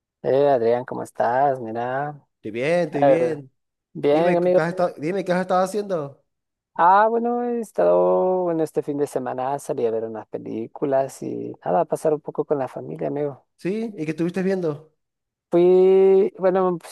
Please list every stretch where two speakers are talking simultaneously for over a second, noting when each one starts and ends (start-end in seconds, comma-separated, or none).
none